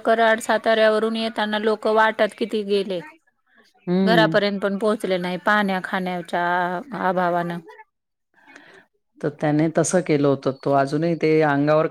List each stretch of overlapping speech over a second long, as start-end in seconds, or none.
none